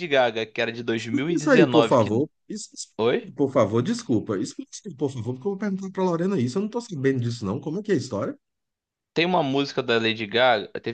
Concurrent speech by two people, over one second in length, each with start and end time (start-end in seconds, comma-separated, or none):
1.0-2.2